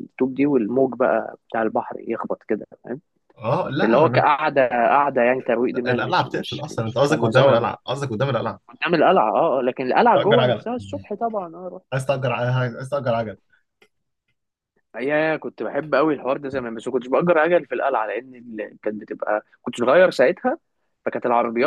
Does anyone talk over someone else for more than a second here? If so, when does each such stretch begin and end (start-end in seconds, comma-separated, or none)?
5.9-7.7